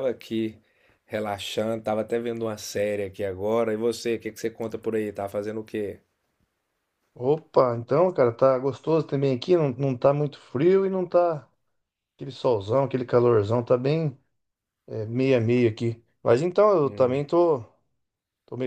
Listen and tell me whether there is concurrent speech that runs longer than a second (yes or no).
no